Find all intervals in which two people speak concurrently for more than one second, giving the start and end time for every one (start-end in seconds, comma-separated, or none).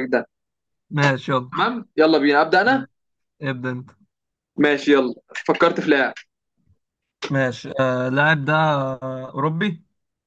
none